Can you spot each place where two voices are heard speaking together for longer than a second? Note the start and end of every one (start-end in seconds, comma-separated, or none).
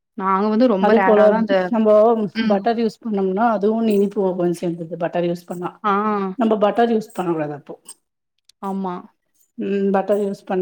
none